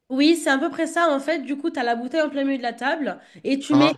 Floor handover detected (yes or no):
no